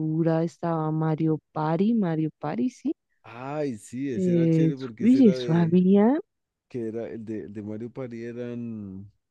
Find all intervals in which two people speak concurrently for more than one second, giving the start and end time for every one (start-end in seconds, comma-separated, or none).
4.1-5.8